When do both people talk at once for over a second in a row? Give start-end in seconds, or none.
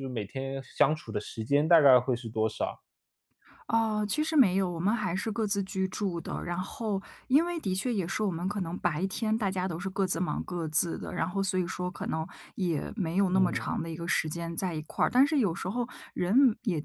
none